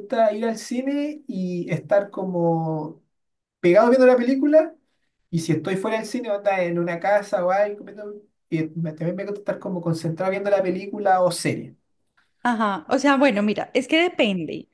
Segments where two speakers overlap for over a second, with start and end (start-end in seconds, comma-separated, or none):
none